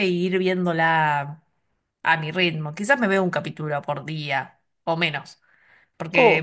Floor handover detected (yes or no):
no